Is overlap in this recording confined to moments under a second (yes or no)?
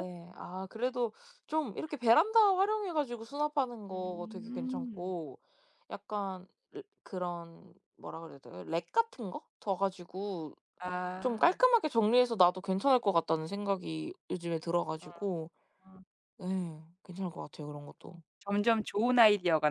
no